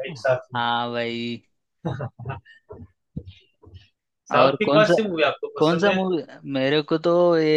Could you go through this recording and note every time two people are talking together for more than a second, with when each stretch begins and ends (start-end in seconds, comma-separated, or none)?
none